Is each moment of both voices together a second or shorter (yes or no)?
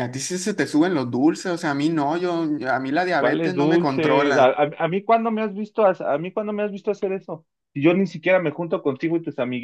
no